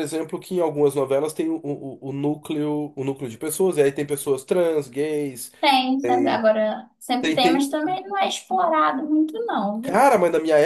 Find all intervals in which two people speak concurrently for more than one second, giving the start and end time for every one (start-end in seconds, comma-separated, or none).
none